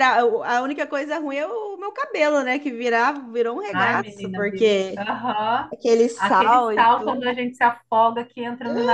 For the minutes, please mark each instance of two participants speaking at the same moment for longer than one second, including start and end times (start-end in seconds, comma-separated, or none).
3.7-5.0, 6.2-7.4